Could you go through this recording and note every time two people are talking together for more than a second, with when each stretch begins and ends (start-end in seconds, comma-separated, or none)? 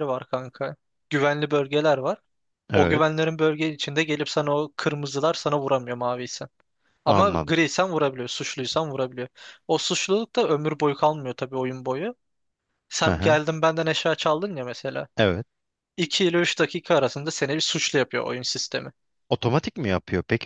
none